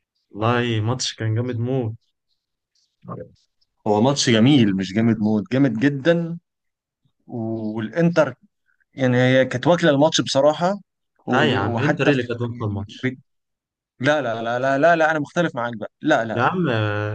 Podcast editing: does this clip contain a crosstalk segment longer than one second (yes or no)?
yes